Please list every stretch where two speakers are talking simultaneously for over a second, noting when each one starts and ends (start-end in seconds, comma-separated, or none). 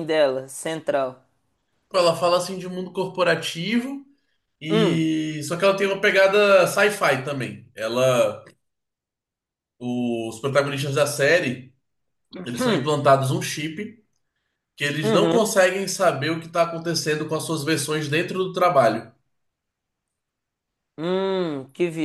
none